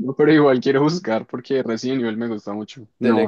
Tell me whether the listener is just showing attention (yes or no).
no